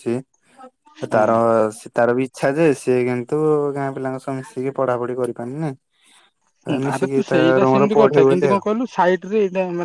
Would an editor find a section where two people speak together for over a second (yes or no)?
yes